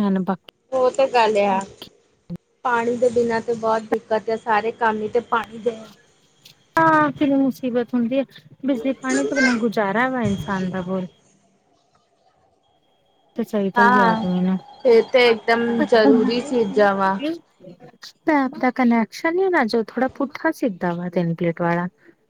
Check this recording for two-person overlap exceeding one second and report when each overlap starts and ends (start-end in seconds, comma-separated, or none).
none